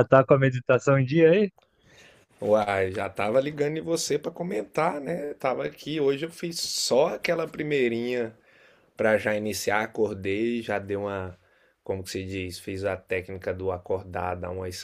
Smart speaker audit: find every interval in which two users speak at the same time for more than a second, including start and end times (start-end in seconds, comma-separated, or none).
none